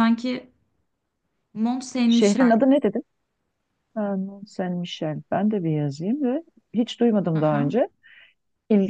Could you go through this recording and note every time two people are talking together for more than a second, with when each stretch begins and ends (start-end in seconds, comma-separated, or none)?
none